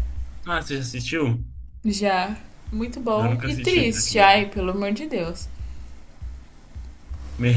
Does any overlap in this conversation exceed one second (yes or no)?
yes